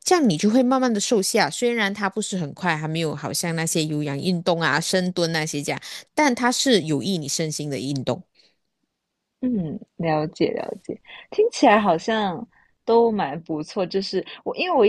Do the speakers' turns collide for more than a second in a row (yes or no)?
no